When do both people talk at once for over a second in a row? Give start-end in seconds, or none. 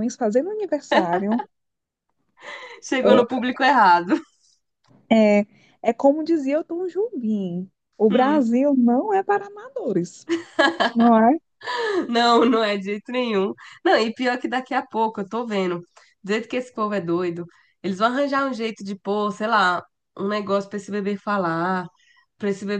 none